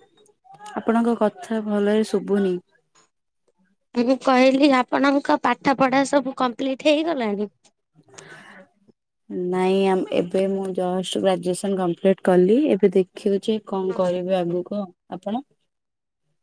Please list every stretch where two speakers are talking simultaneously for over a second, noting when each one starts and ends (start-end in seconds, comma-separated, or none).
none